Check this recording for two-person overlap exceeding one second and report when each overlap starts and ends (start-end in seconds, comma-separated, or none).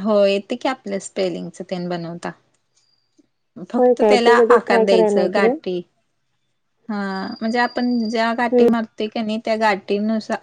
3.8-5.5